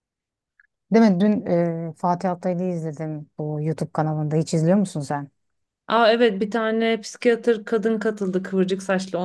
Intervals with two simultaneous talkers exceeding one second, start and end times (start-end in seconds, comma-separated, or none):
none